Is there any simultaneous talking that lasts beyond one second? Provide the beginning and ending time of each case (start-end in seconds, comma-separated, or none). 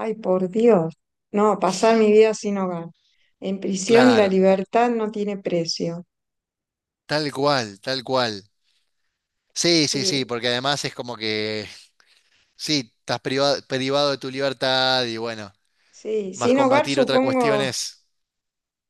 16.3-17.7